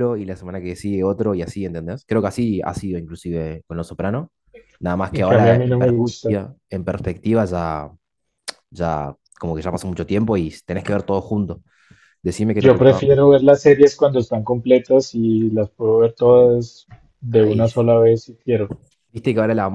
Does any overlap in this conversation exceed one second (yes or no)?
yes